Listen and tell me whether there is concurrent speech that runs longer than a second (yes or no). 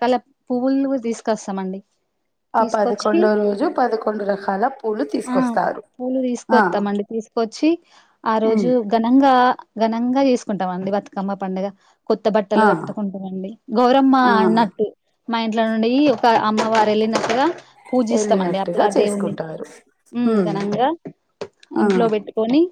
yes